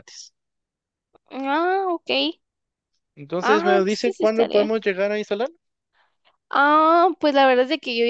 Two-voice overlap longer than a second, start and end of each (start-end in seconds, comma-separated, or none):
3.4-4.7